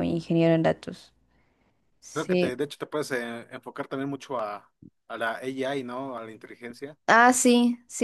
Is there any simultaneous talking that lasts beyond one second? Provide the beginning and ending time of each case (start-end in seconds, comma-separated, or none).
none